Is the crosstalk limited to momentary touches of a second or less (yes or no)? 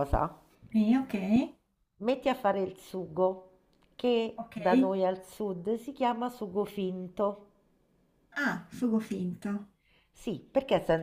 yes